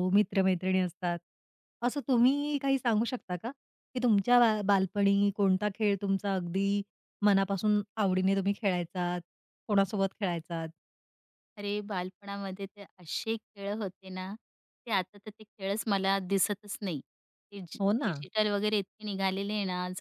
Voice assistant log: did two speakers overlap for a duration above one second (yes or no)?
no